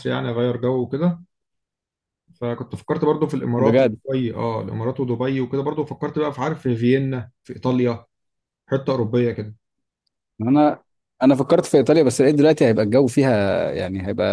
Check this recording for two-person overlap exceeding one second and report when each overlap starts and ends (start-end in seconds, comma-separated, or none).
none